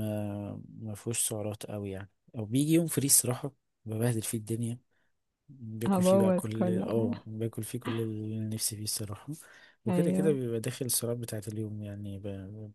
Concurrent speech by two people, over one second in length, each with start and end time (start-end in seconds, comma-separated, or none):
5.9-7.2